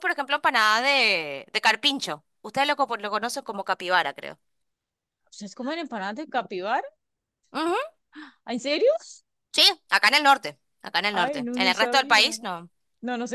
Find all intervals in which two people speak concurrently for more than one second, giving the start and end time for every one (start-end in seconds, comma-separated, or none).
11.1-12.4